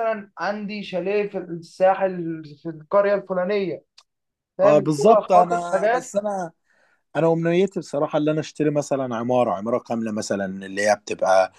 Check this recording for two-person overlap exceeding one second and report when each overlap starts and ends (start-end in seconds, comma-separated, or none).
4.6-6.1